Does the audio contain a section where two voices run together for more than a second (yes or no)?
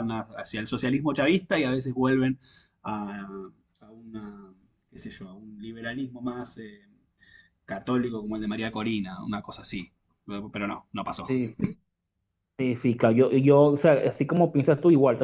no